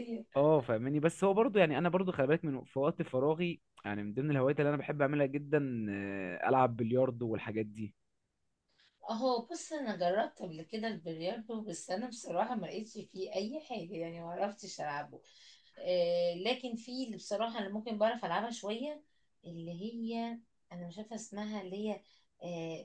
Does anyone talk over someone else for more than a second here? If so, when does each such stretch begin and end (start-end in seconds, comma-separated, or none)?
none